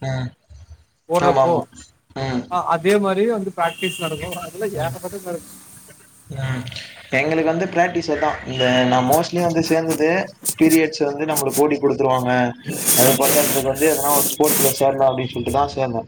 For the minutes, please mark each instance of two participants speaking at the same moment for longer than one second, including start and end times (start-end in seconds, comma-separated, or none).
none